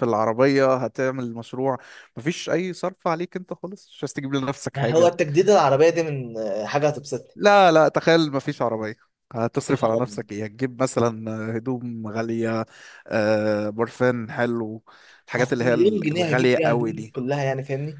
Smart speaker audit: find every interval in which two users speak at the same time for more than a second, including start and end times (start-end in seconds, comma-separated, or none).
15.4-17.1